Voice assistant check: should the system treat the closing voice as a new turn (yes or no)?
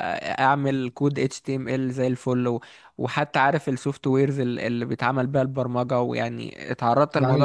yes